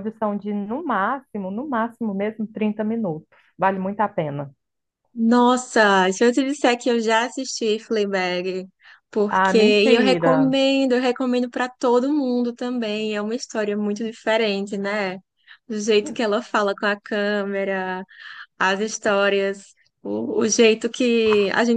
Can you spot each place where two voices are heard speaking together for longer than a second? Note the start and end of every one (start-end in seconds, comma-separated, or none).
9.3-10.6